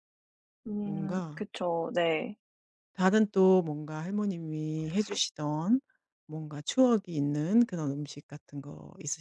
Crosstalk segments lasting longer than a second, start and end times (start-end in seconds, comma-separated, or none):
none